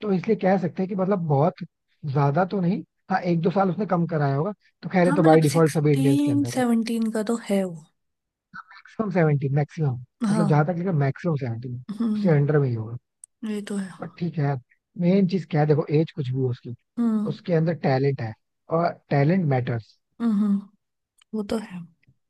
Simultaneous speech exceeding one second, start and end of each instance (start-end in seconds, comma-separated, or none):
5.0-6.6